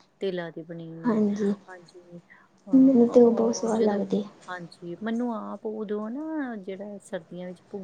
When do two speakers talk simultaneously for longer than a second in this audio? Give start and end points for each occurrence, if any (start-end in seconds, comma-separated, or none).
2.7-4.0